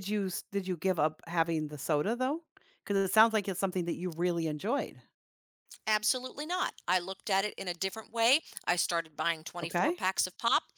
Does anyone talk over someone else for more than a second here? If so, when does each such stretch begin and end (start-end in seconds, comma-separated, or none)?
none